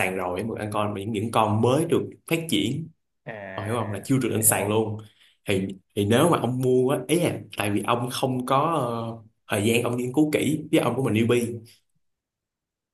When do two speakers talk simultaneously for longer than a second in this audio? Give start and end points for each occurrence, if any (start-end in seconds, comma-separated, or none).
3.5-4.8